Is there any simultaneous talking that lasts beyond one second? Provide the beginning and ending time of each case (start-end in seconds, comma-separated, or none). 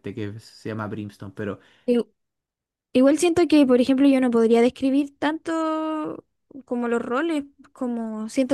none